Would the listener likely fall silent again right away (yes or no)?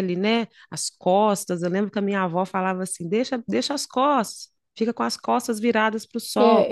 no